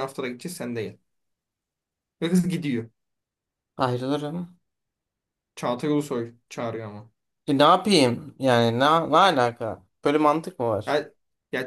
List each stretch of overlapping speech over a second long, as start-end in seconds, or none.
none